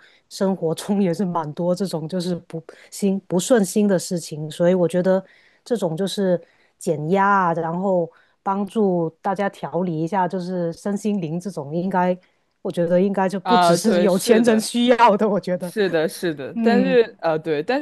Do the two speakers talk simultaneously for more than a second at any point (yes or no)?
yes